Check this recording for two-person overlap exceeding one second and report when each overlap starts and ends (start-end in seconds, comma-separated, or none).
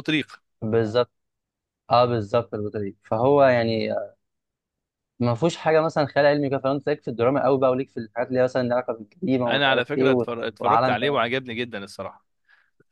9.5-11.2